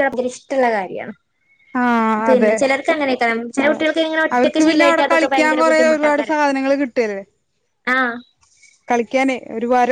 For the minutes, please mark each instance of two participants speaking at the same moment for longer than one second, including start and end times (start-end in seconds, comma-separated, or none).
4.4-6.3